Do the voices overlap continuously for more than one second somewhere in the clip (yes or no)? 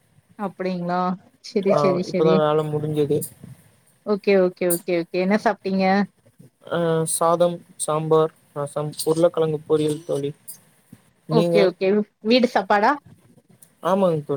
no